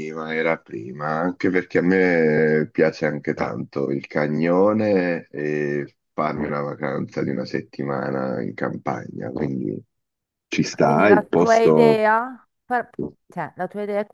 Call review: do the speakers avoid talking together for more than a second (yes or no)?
no